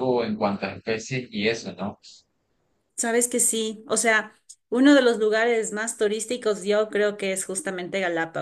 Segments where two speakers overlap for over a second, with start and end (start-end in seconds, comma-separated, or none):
none